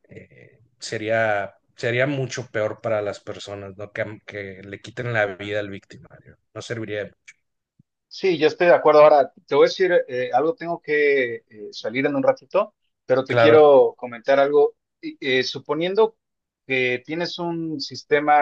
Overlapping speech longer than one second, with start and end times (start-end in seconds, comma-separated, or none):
none